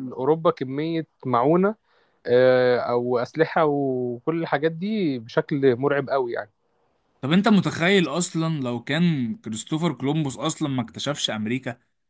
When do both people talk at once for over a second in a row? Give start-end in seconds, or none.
none